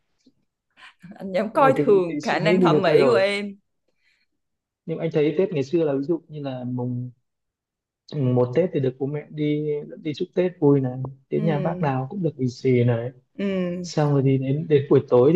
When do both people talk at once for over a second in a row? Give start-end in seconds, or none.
1.5-3.2